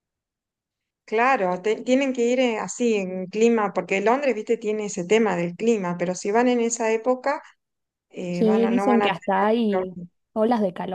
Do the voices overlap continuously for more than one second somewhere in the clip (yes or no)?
yes